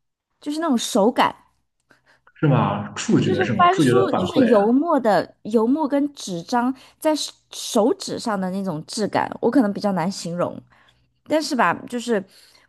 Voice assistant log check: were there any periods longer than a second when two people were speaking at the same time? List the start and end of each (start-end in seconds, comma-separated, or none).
3.2-4.5